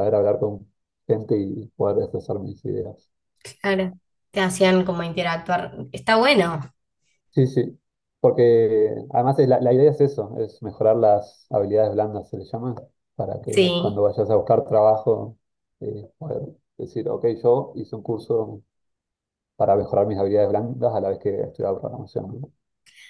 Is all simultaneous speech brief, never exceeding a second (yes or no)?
yes